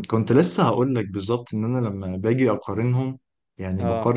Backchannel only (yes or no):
yes